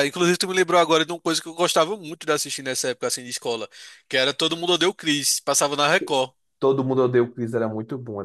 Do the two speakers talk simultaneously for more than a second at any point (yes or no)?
no